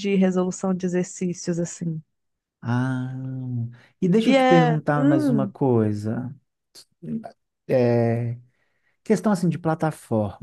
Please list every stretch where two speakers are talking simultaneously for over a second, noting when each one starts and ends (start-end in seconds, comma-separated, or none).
4.2-5.5